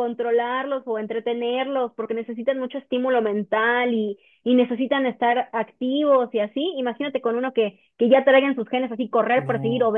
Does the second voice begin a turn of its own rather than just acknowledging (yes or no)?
no